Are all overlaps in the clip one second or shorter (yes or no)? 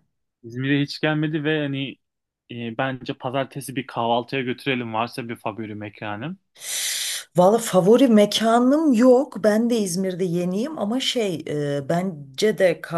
yes